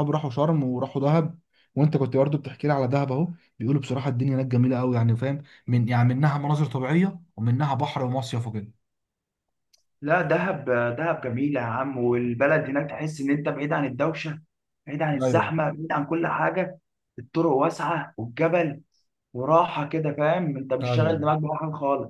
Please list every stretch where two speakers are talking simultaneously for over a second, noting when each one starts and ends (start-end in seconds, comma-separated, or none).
none